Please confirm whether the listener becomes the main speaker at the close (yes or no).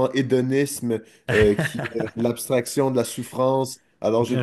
no